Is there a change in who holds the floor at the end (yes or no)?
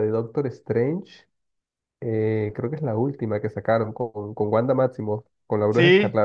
yes